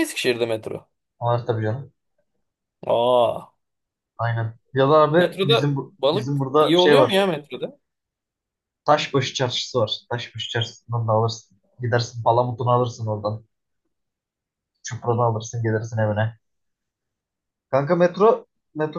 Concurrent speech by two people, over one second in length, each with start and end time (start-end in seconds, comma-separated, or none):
5.2-7.3